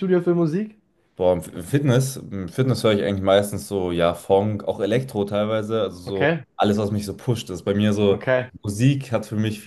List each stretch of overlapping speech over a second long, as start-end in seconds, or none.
none